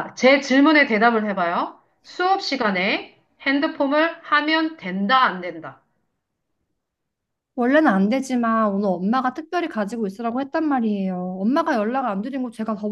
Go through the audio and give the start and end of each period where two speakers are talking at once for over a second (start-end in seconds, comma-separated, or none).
none